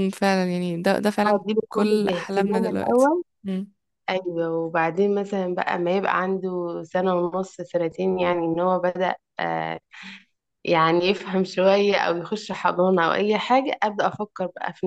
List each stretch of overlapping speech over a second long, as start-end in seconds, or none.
1.3-3.1